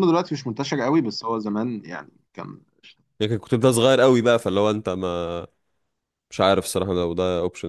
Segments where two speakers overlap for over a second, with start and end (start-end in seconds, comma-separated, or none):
none